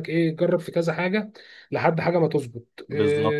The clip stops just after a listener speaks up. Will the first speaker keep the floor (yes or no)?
yes